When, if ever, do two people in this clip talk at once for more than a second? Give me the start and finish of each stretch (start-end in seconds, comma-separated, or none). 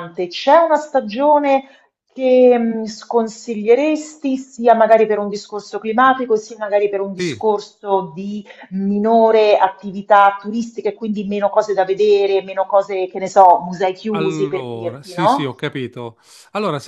14.1-15.7